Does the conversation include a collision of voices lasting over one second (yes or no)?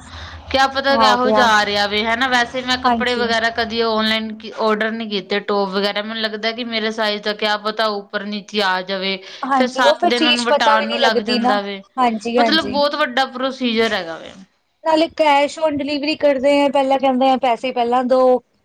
yes